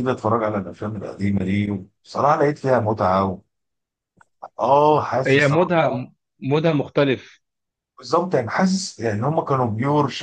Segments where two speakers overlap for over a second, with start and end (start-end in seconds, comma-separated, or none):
none